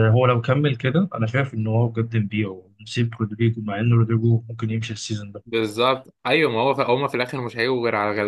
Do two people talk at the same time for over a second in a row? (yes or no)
no